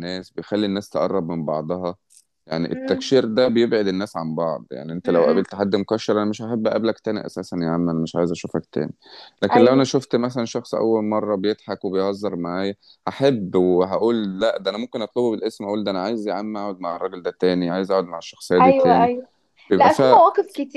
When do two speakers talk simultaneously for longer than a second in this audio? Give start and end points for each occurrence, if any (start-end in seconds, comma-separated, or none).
none